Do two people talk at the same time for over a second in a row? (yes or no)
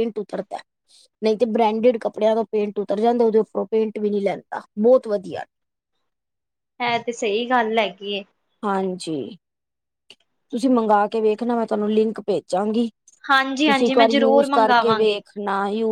yes